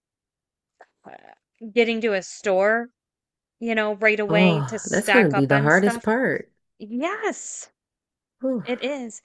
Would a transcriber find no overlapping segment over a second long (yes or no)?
no